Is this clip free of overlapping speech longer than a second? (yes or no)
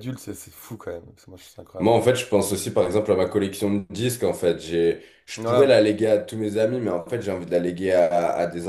yes